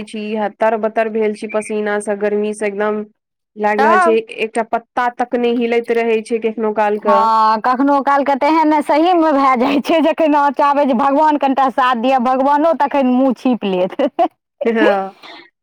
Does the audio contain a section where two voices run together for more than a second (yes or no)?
no